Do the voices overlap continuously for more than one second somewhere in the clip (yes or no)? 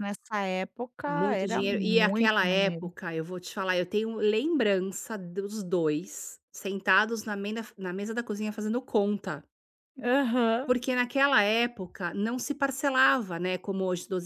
yes